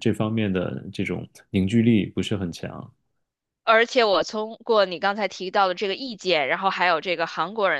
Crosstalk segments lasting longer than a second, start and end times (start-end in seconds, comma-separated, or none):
none